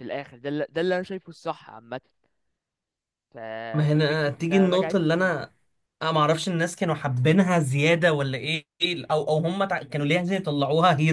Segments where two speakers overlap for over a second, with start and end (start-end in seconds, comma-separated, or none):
3.9-5.3